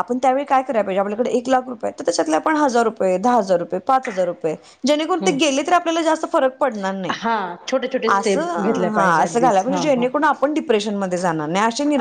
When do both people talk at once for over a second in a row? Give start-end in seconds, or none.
8.1-10.1